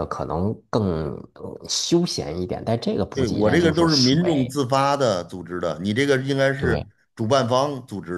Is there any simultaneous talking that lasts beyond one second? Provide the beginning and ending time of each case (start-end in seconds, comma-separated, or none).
3.1-4.6